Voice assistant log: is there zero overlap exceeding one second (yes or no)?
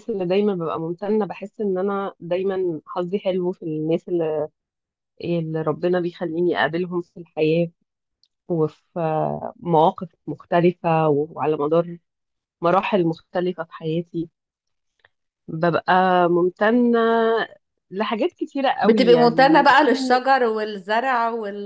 no